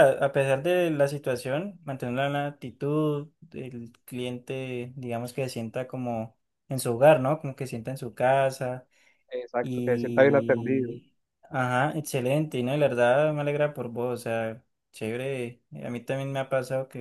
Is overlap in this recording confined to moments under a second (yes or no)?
no